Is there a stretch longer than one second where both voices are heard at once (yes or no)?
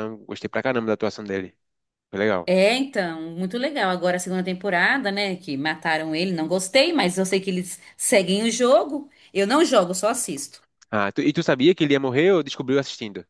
no